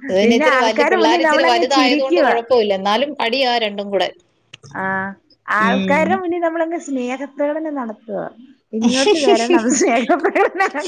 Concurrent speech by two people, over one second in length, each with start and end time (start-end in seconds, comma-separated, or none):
0.6-2.3